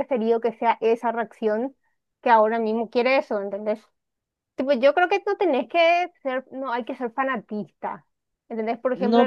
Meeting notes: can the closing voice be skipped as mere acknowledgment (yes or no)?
no